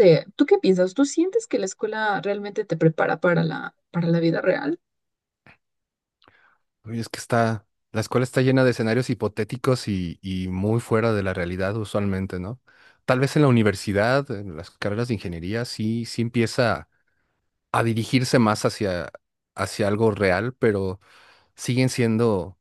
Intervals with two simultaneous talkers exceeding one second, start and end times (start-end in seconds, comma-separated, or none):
none